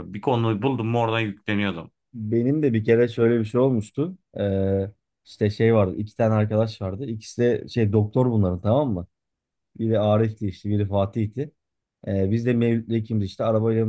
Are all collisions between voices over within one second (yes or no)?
yes